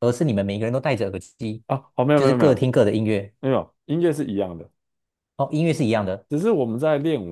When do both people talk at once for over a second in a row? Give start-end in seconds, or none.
none